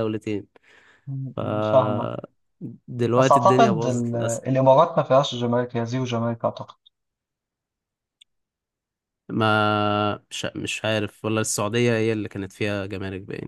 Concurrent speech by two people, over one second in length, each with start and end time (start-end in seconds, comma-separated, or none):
3.2-4.4